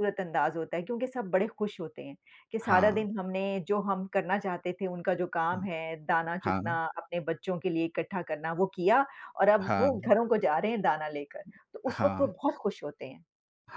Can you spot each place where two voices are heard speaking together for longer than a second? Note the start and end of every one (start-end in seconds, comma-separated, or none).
none